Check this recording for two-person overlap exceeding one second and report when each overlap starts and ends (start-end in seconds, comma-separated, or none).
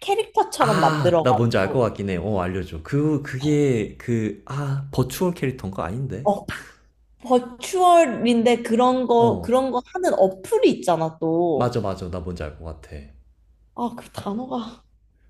0.6-1.9